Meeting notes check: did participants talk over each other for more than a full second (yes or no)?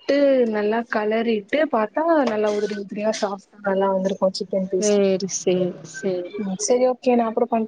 no